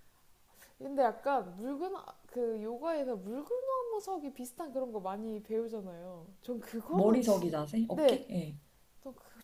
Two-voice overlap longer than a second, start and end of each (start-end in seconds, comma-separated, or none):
6.9-8.3